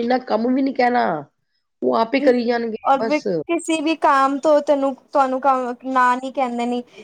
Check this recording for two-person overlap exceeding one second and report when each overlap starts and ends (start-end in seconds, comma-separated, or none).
none